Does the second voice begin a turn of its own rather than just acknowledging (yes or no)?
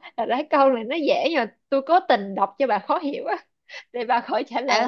yes